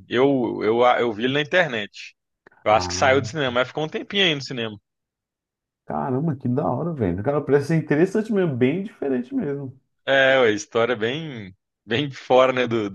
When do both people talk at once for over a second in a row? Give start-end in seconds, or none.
none